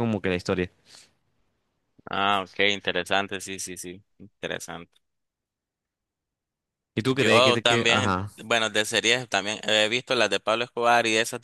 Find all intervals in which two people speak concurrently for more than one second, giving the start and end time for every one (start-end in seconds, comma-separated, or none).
7.1-8.3